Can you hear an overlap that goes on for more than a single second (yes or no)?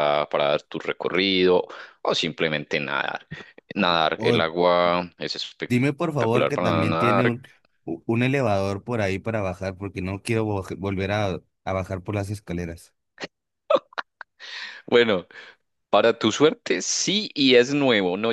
yes